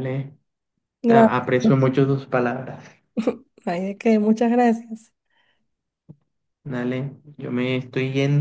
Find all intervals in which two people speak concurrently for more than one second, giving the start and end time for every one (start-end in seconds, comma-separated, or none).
none